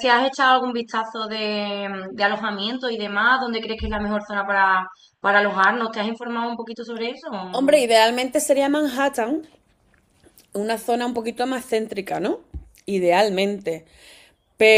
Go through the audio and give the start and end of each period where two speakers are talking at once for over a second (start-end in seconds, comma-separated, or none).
none